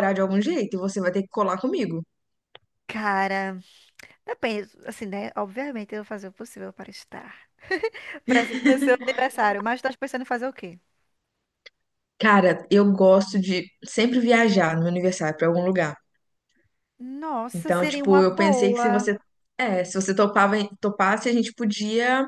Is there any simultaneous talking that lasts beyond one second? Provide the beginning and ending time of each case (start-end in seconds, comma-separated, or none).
17.5-19.1